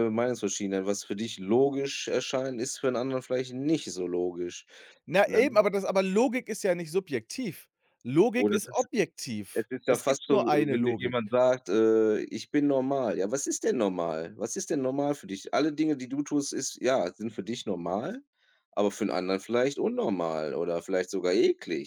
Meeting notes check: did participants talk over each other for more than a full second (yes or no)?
yes